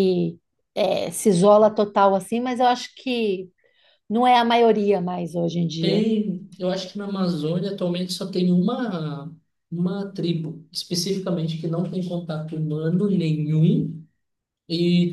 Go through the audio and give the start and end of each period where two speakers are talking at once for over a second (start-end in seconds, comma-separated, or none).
none